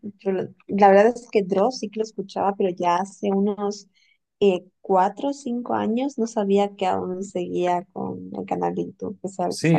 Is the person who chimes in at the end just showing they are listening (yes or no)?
no